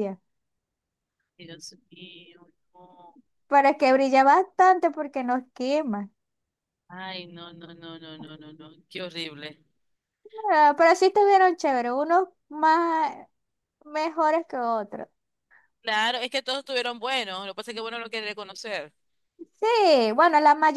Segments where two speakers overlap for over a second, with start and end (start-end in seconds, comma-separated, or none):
none